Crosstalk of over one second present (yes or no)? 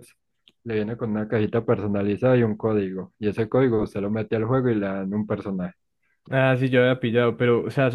no